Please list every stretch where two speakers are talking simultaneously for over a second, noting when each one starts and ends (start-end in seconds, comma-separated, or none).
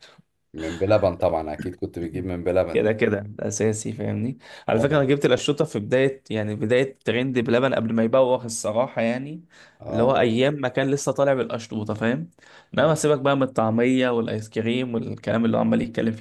none